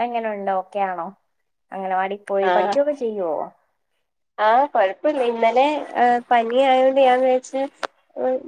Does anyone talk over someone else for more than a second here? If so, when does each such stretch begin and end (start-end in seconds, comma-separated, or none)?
none